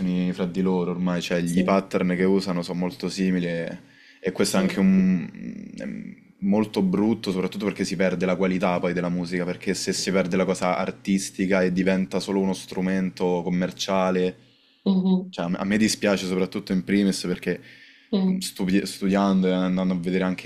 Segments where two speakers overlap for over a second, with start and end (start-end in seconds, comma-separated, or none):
none